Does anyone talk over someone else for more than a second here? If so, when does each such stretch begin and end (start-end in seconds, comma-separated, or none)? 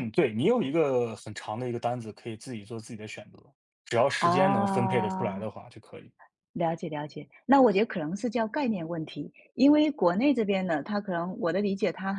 4.2-5.5